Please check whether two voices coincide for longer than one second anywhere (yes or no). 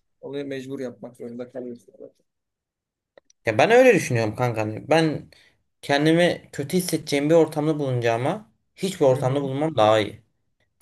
no